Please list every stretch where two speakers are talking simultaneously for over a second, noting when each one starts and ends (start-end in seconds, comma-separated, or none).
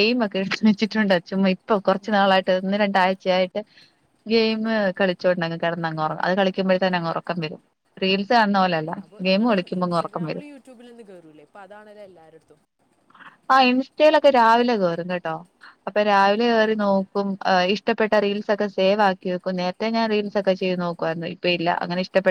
none